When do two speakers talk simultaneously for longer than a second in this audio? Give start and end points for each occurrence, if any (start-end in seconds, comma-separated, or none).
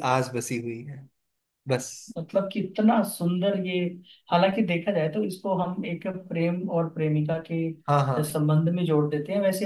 none